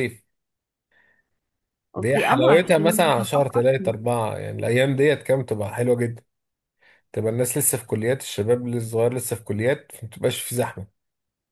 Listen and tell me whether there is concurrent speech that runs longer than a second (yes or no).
yes